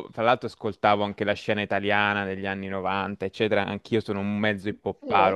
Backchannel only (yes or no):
yes